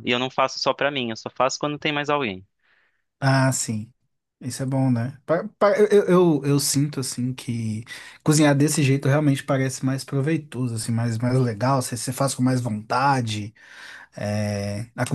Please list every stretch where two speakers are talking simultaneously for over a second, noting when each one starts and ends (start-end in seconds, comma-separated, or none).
none